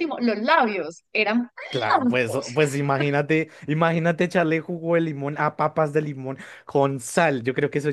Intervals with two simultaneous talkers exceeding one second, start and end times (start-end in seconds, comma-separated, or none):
none